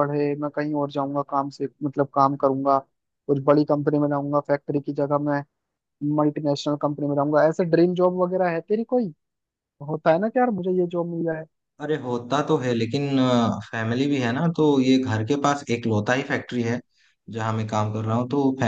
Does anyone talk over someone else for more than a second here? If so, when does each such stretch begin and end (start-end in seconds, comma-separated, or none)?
none